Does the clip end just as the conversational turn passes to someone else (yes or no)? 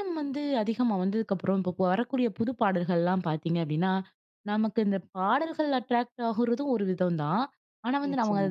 no